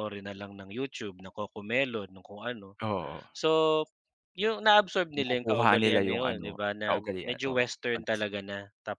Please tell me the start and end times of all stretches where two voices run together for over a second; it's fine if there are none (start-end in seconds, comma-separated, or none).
5.2-8.1